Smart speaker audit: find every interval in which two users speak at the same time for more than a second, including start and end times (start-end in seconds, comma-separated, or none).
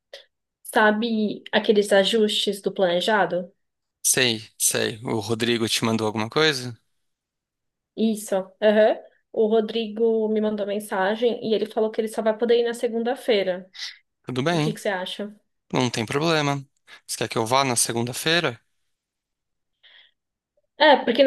none